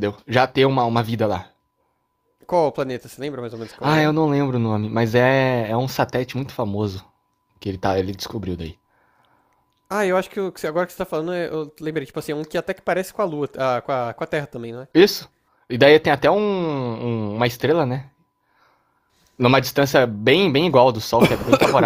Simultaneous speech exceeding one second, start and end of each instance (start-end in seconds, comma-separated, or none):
none